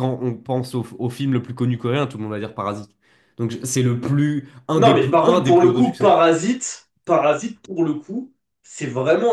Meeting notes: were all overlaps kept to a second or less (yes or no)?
no